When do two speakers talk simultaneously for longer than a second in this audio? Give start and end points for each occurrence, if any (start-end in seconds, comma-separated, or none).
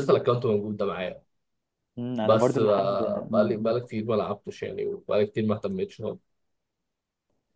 2.2-3.7